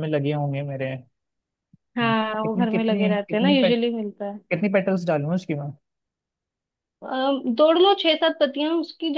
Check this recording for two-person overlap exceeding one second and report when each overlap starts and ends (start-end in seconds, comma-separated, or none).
2.4-3.8